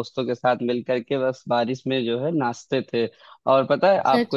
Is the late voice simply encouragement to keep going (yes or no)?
yes